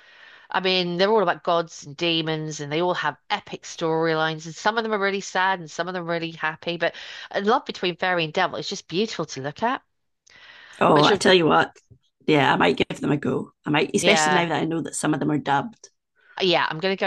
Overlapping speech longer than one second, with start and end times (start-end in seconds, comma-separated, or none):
none